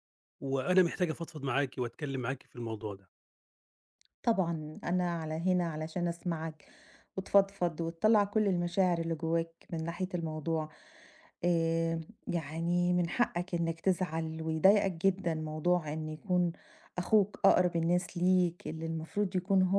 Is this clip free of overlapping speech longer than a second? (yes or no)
yes